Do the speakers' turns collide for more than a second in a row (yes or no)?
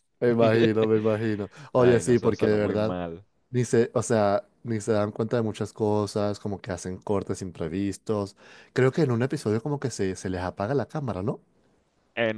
yes